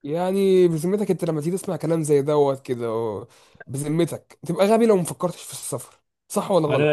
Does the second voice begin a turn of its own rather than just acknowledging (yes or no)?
yes